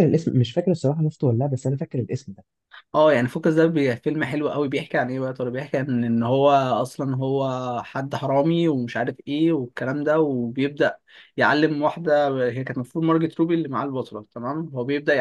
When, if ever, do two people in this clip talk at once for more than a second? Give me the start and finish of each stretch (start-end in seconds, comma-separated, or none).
none